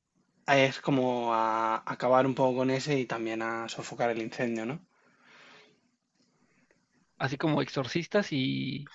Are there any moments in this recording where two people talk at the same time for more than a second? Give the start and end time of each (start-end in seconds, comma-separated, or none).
none